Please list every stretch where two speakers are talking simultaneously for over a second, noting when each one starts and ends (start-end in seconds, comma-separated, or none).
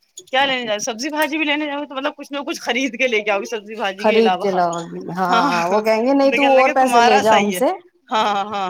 5.3-7.6